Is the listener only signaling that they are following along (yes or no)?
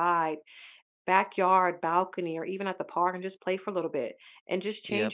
yes